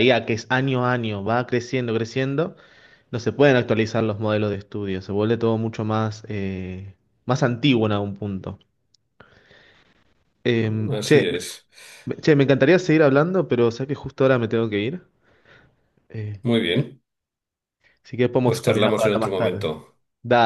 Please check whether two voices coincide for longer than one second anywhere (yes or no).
yes